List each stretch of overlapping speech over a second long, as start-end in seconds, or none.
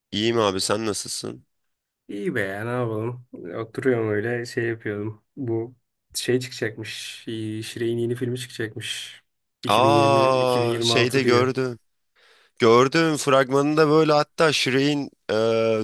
9.7-11.5